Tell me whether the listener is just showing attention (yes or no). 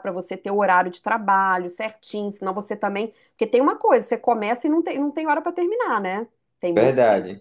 no